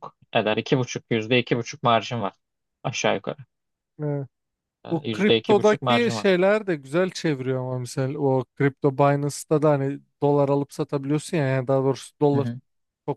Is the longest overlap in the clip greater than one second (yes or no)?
yes